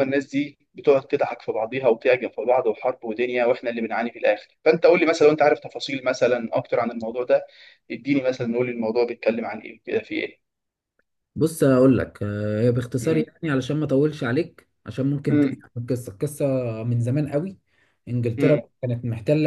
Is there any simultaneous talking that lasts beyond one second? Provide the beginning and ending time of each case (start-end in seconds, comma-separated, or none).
none